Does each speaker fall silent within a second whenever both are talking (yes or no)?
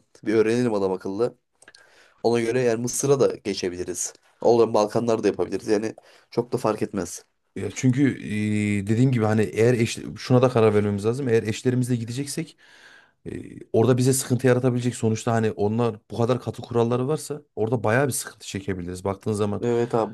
yes